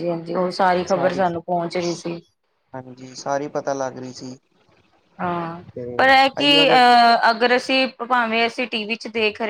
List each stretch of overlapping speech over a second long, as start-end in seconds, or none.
none